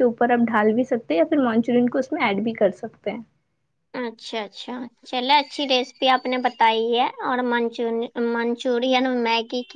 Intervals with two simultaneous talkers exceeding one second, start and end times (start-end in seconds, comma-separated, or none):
none